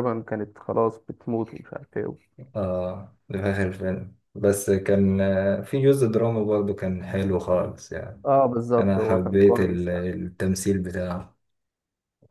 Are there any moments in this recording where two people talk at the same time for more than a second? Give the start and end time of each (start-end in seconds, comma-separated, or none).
8.8-10.1